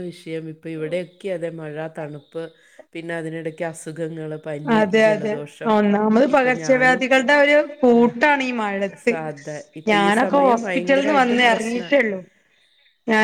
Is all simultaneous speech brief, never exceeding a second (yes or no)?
no